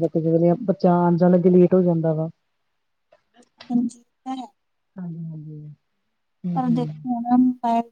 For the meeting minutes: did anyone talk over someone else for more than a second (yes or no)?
no